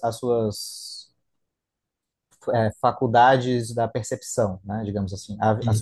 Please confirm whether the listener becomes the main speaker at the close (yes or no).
no